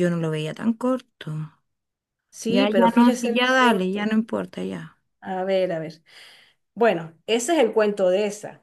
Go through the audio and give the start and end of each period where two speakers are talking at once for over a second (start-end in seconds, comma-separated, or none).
2.5-4.1